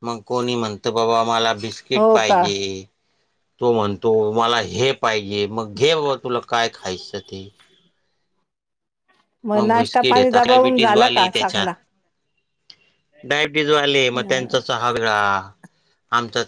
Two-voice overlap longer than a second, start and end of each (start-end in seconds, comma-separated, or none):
9.7-11.7